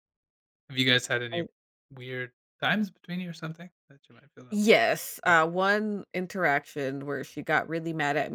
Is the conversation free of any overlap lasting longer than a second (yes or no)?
yes